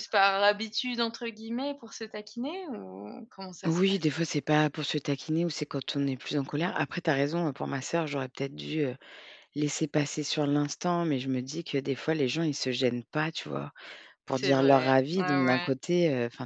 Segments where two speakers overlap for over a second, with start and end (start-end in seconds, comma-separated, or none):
14.3-15.7